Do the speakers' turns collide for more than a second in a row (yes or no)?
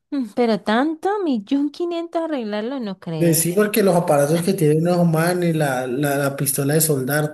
no